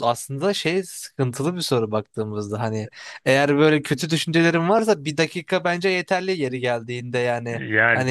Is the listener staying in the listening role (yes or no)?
no